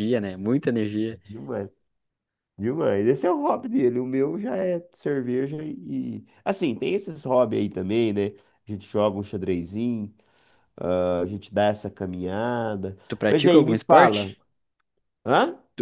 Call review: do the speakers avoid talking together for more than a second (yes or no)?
no